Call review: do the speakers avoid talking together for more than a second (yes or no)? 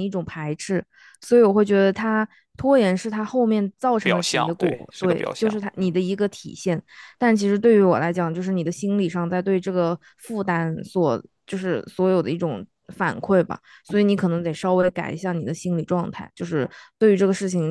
no